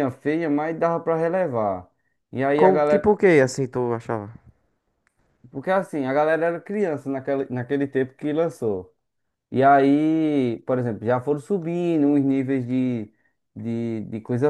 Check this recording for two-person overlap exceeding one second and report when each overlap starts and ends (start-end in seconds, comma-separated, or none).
none